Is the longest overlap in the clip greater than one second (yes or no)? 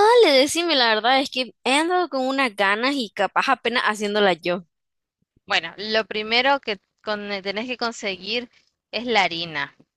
no